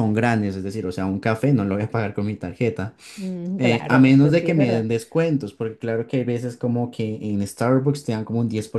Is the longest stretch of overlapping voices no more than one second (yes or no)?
no